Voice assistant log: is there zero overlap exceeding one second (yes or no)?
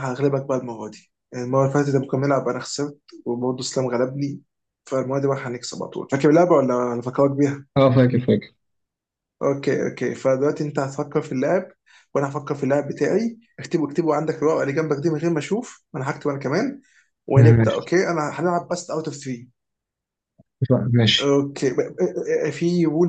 yes